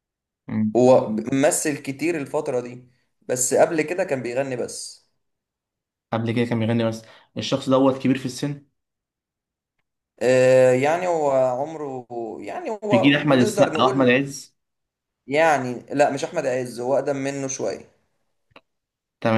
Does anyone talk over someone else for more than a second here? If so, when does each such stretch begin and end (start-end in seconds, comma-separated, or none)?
12.9-14.1